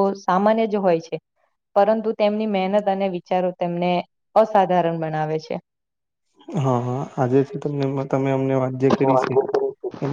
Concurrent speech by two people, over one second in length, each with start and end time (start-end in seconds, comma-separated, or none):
none